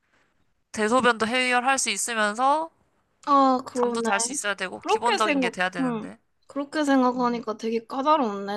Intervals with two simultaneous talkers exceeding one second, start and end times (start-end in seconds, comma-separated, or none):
4.8-6.1